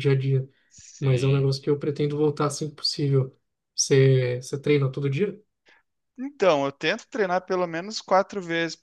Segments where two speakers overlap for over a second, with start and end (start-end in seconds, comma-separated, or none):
none